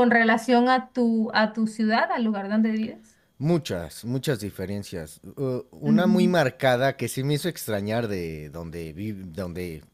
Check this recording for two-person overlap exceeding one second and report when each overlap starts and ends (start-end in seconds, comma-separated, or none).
none